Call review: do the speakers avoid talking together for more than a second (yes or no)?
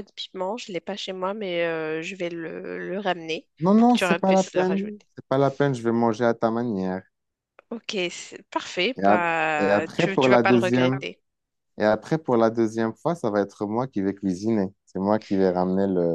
no